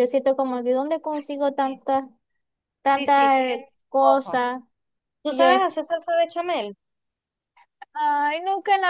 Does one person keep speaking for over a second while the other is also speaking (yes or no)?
yes